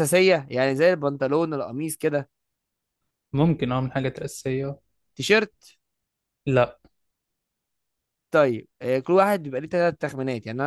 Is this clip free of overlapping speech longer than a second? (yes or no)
yes